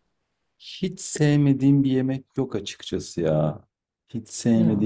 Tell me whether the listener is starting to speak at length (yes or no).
no